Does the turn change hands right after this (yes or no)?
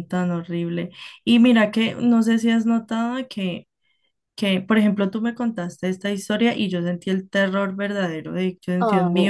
no